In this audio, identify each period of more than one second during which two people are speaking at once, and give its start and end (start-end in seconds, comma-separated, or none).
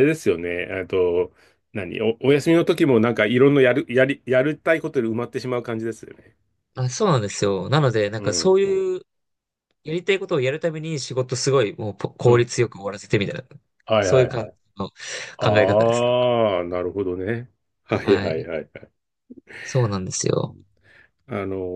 none